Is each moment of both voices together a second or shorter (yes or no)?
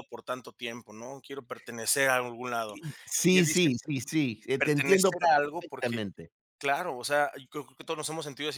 no